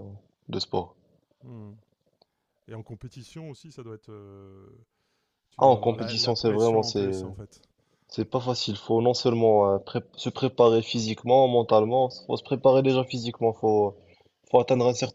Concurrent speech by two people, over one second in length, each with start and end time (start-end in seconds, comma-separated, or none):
5.6-7.1